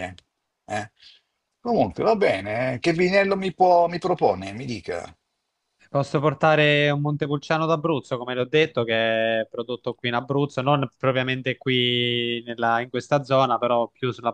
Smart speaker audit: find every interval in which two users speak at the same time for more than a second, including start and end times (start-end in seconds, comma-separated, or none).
none